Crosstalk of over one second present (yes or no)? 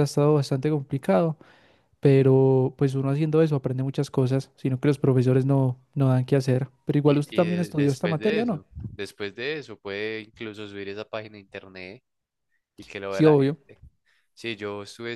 yes